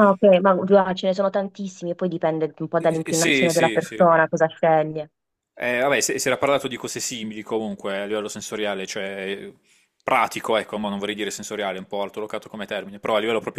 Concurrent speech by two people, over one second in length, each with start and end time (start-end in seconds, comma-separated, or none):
2.8-4.0